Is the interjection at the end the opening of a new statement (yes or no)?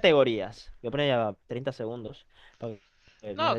yes